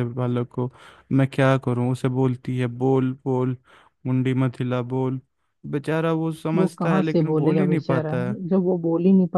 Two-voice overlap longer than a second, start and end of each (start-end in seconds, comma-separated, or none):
6.5-8.1